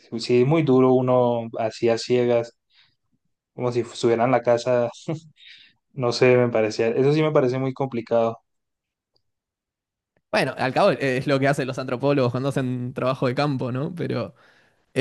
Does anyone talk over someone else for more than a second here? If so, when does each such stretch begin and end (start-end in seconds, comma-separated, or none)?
none